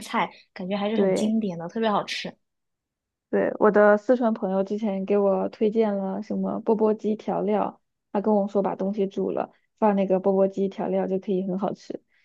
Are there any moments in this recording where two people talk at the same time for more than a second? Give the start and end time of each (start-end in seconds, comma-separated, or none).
none